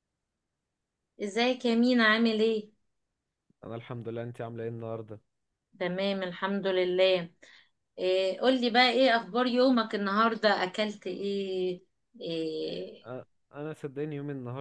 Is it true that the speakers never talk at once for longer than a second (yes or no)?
yes